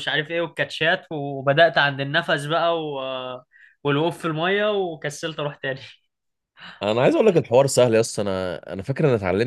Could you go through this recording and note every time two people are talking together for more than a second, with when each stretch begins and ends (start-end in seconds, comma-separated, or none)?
none